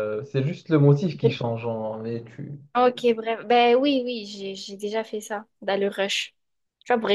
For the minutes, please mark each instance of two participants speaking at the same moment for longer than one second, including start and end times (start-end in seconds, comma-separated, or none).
none